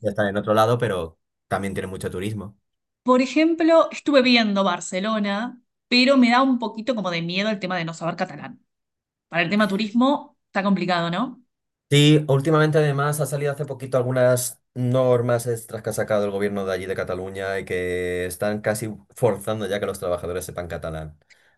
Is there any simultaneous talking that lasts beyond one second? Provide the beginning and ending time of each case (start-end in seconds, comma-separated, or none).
none